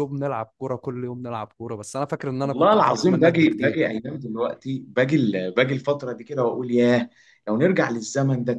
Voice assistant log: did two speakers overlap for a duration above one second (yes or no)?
yes